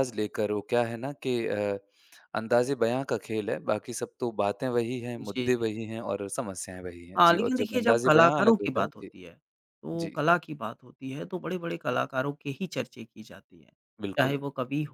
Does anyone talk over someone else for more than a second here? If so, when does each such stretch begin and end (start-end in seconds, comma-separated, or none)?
7.2-9.1